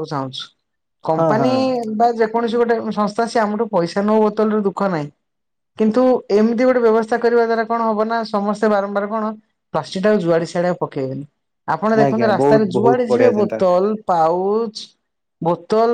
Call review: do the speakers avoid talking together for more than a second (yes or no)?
no